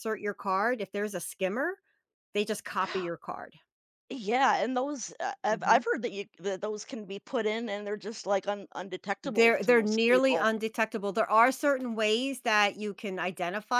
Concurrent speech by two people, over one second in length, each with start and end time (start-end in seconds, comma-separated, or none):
9.2-10.6